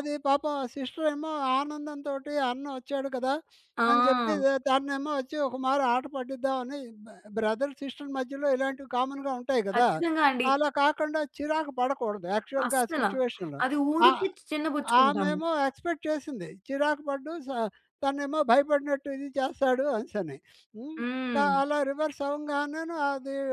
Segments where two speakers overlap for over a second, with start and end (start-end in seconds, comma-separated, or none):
none